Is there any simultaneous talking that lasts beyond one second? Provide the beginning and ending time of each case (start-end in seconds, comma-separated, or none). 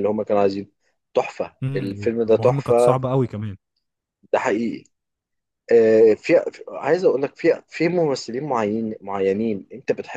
1.6-3.0